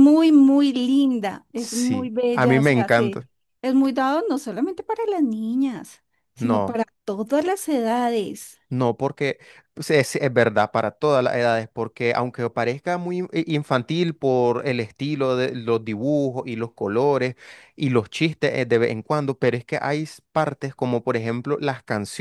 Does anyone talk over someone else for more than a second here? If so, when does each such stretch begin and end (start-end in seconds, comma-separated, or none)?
1.6-3.2